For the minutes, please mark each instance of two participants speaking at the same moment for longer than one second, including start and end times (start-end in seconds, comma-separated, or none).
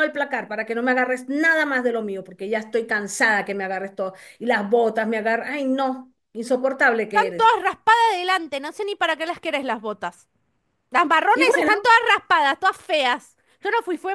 none